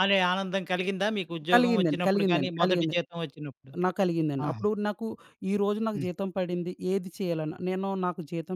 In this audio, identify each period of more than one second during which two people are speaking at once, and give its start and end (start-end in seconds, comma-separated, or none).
1.5-3.0